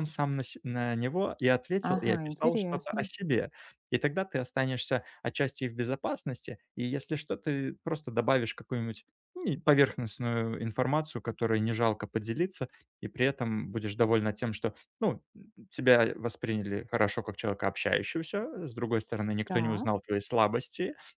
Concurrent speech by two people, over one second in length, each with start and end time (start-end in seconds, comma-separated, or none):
1.8-3.1